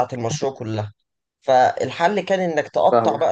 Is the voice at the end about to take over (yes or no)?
no